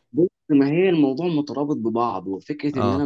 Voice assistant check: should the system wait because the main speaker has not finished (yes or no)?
yes